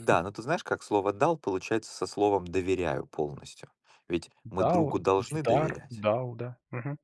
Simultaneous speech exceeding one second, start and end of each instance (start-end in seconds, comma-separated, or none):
4.4-6.0